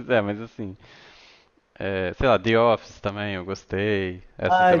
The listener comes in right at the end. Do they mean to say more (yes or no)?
yes